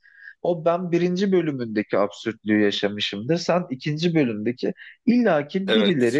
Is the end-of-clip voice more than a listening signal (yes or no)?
no